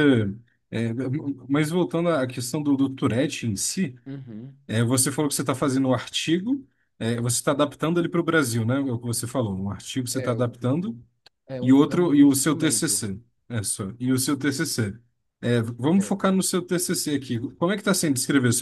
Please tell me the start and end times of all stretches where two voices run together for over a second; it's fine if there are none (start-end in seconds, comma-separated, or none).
11.6-13.1